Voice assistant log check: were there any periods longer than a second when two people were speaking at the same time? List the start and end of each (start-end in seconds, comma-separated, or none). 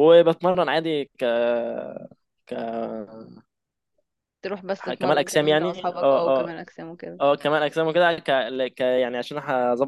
4.8-6.5